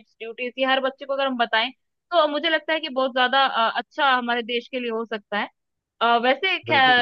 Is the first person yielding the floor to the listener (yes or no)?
no